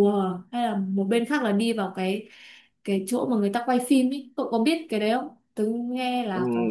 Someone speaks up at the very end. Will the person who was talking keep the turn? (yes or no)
no